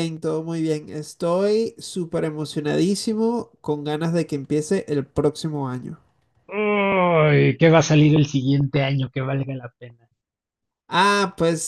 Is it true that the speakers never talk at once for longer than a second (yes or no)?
yes